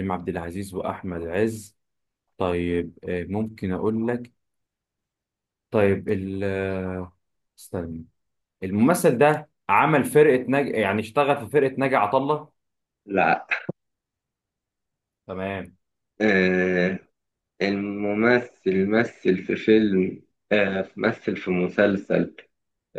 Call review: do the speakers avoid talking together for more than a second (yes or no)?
yes